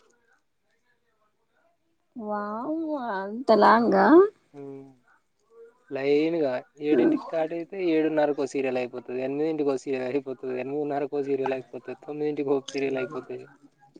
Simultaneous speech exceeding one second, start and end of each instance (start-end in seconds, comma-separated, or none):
none